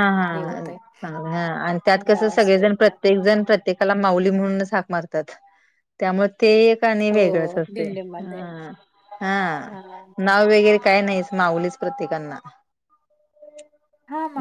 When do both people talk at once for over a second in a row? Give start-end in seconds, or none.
2.1-3.4, 7.1-8.4